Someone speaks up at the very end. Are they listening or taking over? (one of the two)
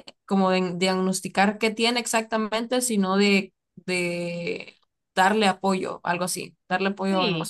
taking over